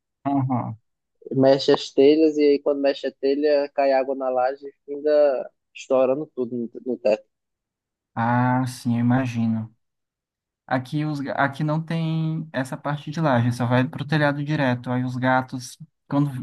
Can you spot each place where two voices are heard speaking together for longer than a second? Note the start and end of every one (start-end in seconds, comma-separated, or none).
none